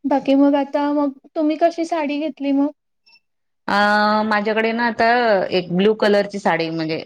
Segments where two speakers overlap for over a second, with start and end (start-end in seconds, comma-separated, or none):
none